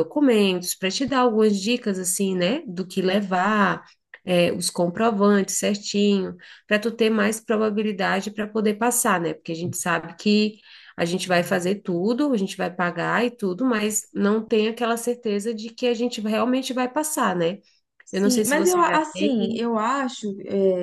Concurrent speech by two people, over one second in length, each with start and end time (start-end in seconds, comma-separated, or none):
18.1-19.7